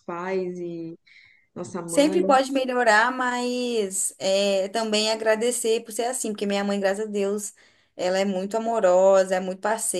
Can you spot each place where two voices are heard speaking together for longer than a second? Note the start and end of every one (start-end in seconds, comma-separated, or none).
none